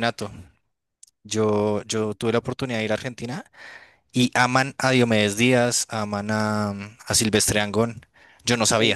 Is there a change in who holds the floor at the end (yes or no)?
yes